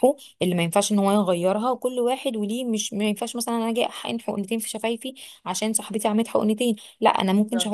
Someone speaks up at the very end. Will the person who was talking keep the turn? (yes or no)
yes